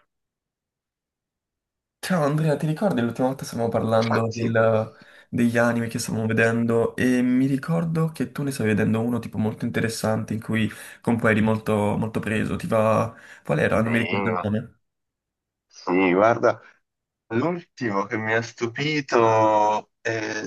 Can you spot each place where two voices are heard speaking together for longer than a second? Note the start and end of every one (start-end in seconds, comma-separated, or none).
none